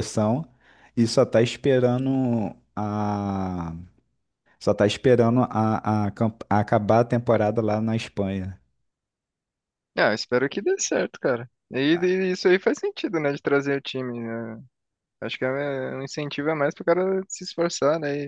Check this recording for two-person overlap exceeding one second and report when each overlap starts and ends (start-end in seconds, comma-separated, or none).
none